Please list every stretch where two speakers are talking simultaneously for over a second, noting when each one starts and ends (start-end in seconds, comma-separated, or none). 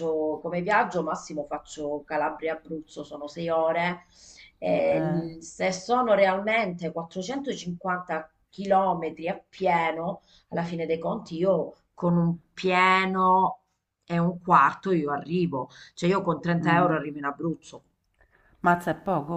none